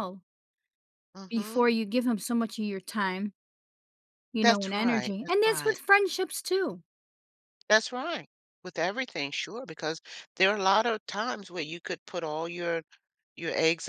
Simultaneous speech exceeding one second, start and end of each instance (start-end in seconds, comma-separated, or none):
4.4-5.8